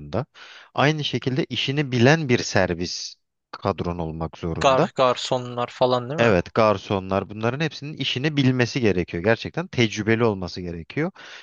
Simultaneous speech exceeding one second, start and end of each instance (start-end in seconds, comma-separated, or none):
none